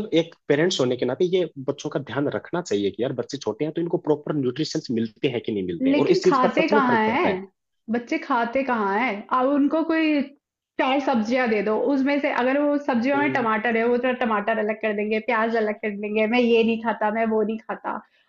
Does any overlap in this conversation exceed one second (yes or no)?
yes